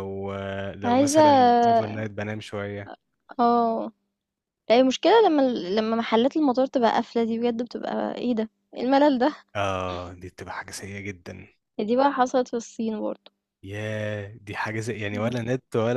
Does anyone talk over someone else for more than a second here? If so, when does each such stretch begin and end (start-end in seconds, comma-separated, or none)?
0.8-2.0